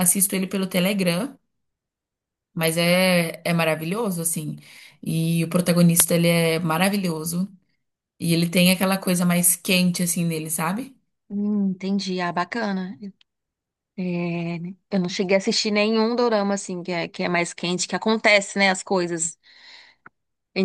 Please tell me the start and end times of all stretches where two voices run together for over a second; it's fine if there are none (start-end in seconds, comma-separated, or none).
none